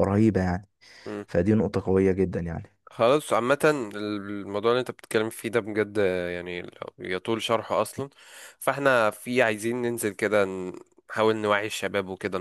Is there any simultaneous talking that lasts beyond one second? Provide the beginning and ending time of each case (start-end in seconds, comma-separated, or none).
none